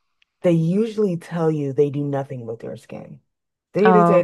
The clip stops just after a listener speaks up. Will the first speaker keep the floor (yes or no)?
yes